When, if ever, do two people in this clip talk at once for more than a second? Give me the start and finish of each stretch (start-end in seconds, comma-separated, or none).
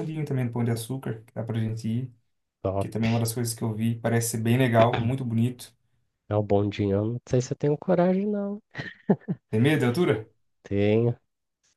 none